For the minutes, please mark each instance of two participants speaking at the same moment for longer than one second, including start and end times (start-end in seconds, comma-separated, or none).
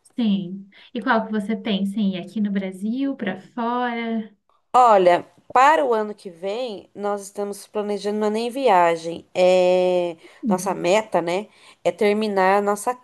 none